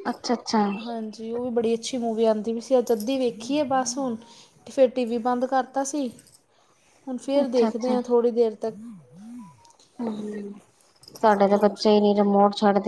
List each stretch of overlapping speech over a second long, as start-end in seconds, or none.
none